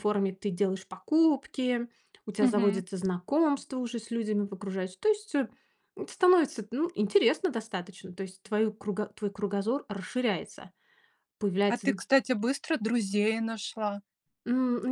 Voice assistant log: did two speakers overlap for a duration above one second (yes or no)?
no